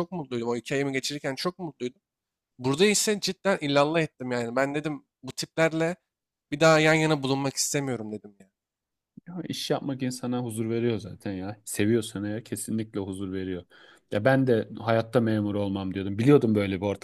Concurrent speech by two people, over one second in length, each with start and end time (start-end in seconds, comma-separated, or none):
none